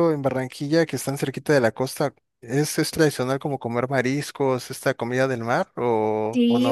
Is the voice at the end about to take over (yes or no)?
yes